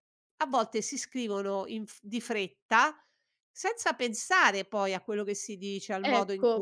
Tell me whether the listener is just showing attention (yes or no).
no